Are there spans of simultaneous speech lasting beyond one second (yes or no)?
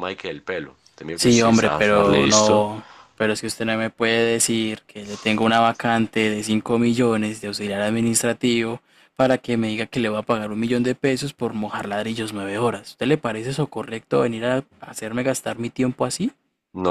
yes